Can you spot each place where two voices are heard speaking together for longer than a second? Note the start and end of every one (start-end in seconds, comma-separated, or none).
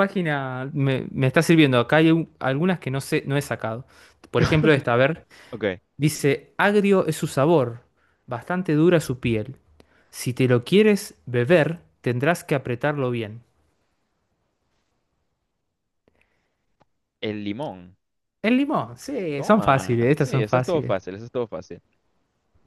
19.4-20.9